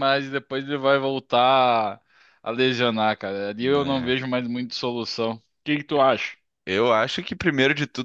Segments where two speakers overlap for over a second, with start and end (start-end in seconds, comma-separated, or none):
none